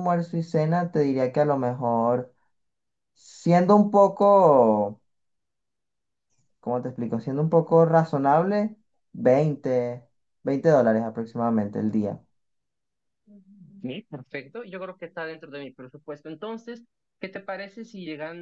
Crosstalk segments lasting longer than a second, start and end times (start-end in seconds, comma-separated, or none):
none